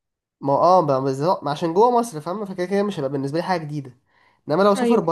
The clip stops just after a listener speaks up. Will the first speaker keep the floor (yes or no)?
yes